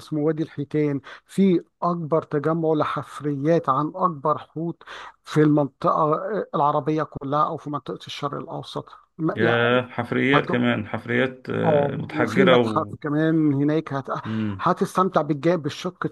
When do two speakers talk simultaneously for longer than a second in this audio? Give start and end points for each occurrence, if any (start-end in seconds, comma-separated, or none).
11.6-12.9